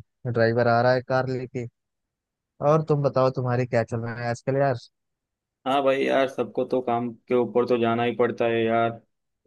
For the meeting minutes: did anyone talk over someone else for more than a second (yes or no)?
no